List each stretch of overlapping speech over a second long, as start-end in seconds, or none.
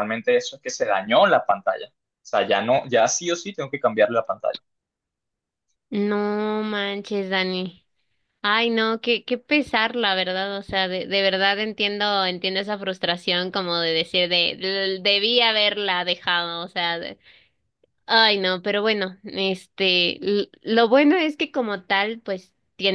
none